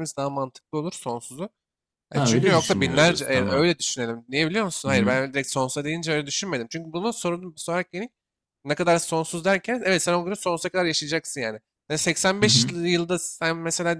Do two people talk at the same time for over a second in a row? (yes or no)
yes